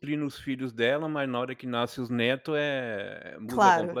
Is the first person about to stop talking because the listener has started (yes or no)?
yes